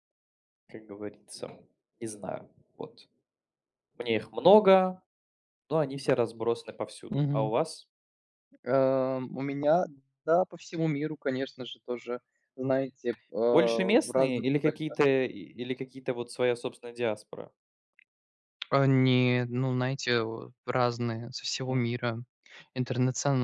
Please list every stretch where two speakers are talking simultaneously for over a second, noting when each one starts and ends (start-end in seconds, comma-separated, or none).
13.5-15.0